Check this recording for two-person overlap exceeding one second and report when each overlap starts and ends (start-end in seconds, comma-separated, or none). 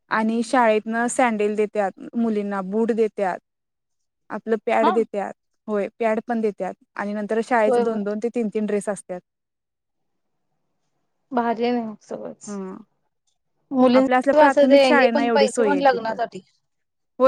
14.0-15.7